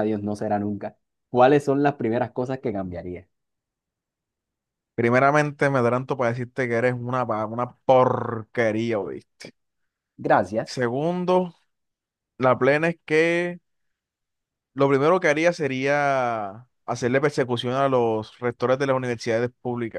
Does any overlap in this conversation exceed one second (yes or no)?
no